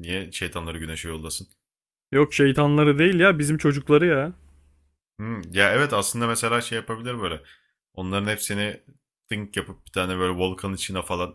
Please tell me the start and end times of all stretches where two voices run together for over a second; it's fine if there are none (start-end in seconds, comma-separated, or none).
none